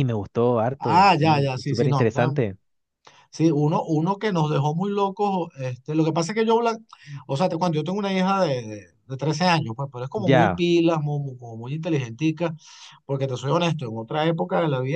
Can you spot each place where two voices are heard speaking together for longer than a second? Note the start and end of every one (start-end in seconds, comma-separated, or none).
0.8-2.5